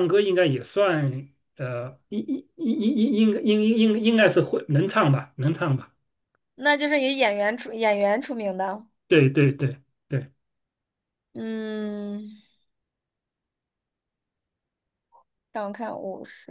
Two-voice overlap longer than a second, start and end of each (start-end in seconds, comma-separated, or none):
none